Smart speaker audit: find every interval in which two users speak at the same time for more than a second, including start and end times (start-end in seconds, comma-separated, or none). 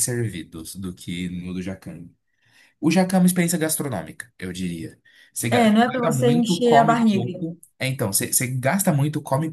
5.5-7.4